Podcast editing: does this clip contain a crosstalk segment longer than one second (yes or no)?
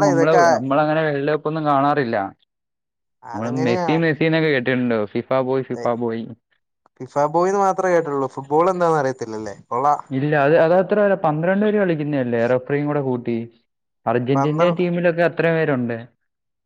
no